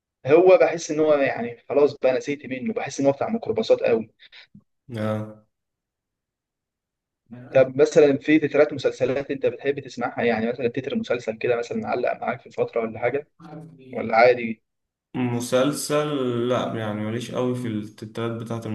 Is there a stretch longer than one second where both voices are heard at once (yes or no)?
no